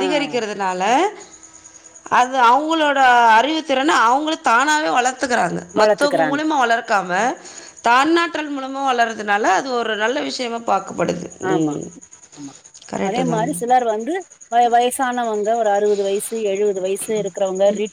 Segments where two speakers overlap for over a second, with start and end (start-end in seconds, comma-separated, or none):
none